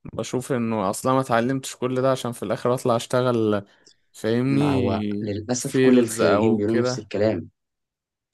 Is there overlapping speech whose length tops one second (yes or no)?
yes